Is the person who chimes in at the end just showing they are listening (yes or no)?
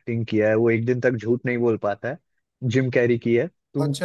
no